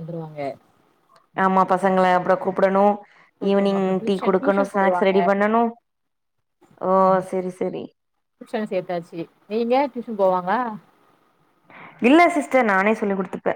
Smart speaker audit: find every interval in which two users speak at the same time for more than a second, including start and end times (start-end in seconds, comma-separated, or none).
3.5-5.2